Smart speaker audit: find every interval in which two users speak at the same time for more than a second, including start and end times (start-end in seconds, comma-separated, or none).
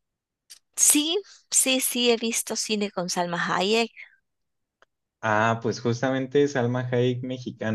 none